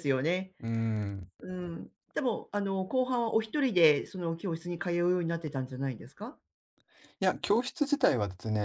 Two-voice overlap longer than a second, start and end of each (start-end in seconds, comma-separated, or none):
none